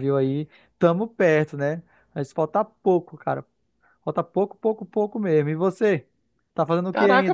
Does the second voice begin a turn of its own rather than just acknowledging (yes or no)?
yes